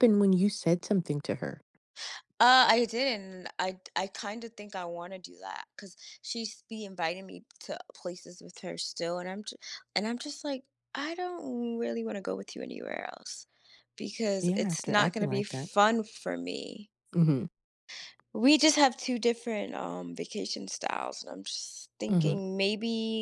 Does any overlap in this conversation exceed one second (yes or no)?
yes